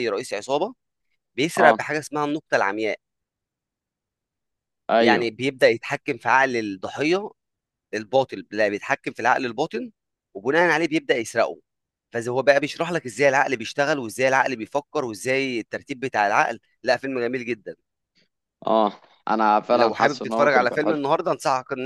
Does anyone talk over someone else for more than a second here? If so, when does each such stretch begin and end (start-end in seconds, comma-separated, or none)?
19.7-21.0